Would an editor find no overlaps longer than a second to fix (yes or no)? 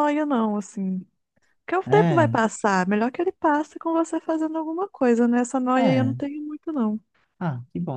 yes